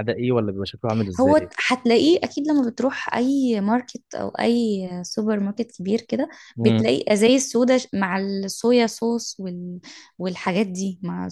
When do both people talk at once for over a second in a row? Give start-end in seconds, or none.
none